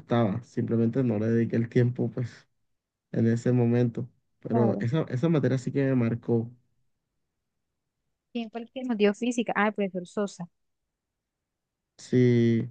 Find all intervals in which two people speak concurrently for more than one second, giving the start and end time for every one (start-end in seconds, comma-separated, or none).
none